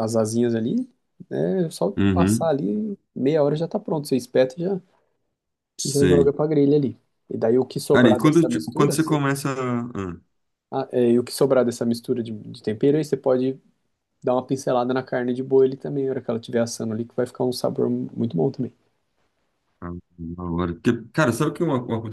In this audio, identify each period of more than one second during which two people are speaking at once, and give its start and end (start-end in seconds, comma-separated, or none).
7.9-9.2